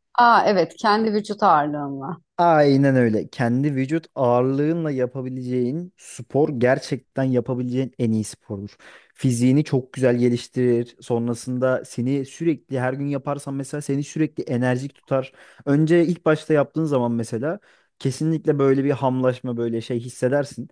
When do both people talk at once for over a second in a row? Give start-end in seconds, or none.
none